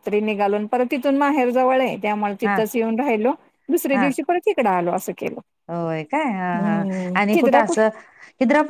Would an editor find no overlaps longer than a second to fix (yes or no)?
yes